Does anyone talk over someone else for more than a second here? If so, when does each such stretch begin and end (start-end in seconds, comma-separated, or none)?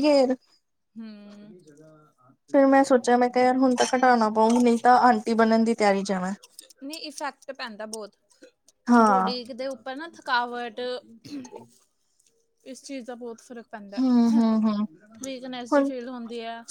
2.5-4.1